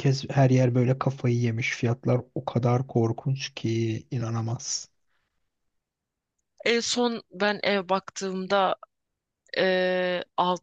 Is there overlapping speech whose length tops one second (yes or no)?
no